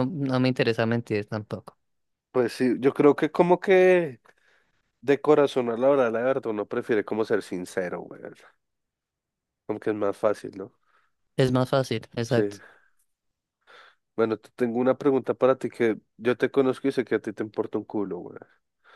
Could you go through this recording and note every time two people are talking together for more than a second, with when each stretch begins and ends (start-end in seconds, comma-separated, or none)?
none